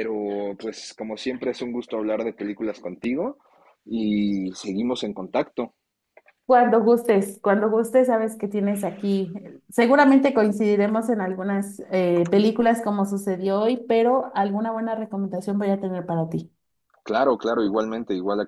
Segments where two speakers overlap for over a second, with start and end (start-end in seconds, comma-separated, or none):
none